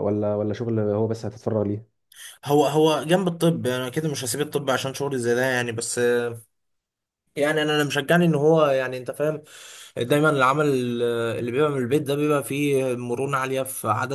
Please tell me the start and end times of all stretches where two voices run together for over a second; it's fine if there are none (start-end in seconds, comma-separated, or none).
none